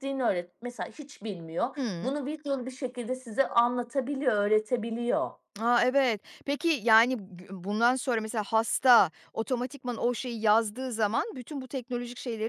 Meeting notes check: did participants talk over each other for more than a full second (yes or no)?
no